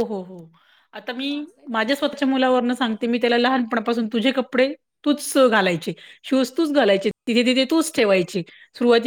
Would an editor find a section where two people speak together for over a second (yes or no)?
yes